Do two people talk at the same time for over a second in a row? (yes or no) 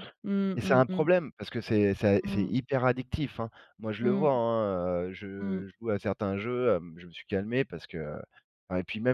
no